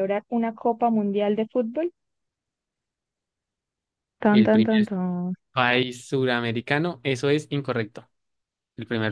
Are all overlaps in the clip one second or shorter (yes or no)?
yes